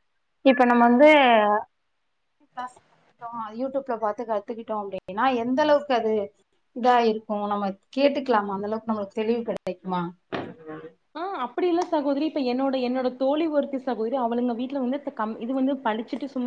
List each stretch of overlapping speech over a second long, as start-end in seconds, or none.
none